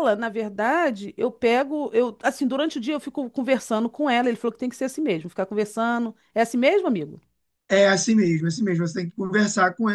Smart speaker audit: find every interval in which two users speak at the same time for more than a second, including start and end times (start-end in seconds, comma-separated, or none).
none